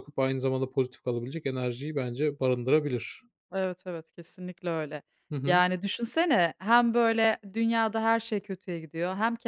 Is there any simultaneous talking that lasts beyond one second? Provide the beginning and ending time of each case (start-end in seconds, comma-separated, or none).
none